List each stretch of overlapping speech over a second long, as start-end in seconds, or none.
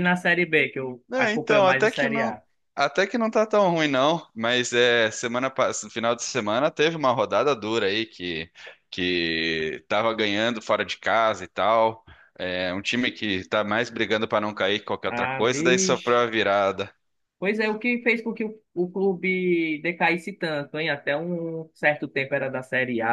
1.1-2.4, 15.1-16.3